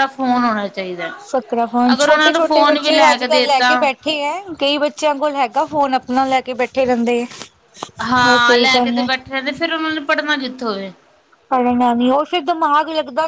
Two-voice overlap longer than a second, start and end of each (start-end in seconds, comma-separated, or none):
1.9-3.7